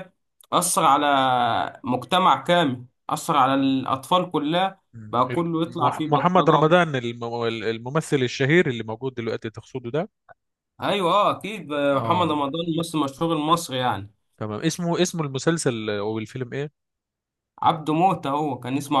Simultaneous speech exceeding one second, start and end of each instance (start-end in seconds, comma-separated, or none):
4.9-6.6